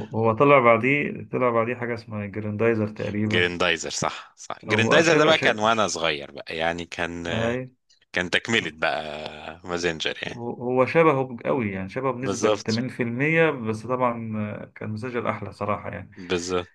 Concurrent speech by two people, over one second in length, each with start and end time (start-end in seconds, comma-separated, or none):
4.7-6.0